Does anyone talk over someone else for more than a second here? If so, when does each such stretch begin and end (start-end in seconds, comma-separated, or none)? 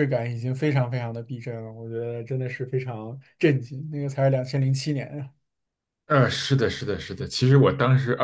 none